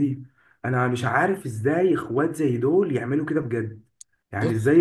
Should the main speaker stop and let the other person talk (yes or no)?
no